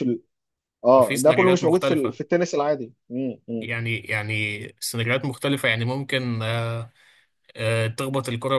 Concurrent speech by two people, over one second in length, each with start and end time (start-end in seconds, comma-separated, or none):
1.0-2.2